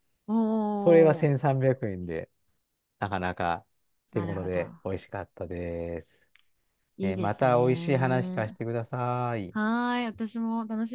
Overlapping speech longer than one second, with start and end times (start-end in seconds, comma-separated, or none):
7.0-8.6